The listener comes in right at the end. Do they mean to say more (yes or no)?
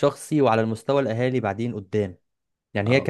no